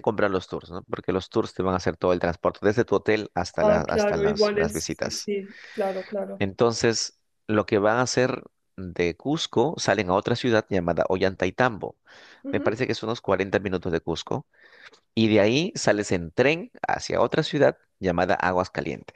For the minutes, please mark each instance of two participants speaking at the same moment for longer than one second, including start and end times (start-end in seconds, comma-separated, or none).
3.6-5.3